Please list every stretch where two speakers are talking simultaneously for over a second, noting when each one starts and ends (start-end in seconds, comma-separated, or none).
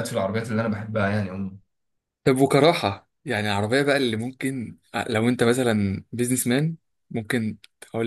none